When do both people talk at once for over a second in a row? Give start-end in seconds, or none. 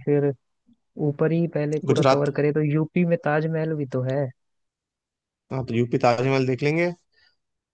none